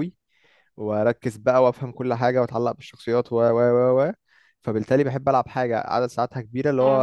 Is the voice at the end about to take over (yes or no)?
no